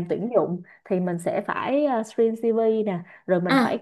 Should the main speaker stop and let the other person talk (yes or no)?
no